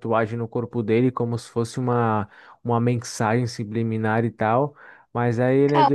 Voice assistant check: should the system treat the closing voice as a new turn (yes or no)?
no